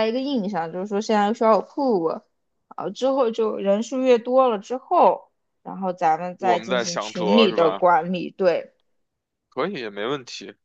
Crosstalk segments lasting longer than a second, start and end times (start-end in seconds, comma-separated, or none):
6.4-7.8